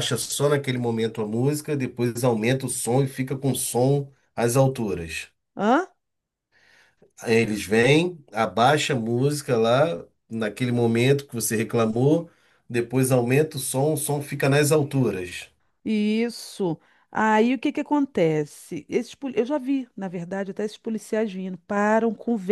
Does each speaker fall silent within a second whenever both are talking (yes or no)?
yes